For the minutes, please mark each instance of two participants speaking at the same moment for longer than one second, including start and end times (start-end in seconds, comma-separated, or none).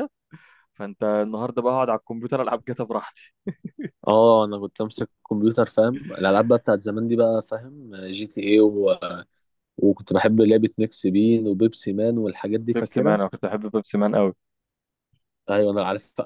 none